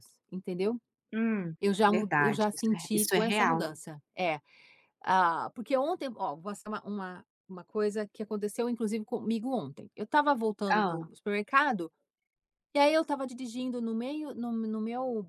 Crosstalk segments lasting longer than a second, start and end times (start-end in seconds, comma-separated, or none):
1.6-3.7